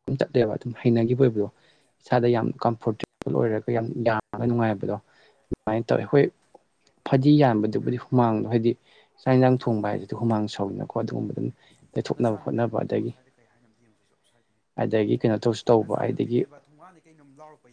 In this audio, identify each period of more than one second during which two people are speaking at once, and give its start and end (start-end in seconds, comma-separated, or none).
14.8-16.4